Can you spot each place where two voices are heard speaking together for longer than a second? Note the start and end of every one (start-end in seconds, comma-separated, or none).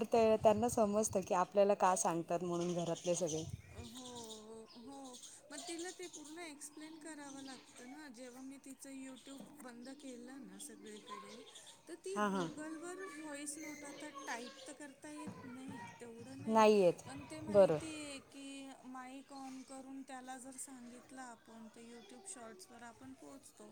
none